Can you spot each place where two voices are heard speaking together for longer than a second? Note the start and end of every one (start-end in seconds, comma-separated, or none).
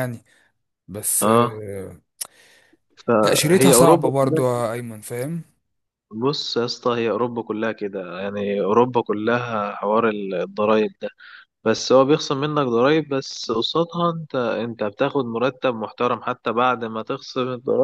3.2-4.6